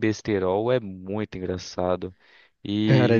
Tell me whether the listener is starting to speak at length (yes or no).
yes